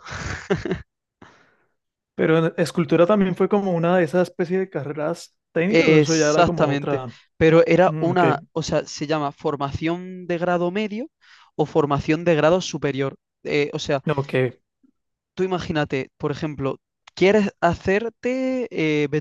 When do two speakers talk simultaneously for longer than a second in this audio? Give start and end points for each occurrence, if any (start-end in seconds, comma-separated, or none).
5.7-7.1